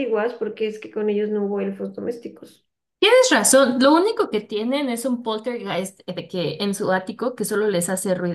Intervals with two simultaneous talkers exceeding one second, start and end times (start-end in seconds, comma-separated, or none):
none